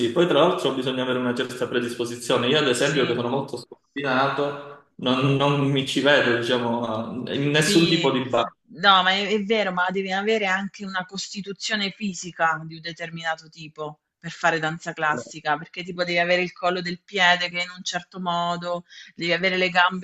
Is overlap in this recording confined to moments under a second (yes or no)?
yes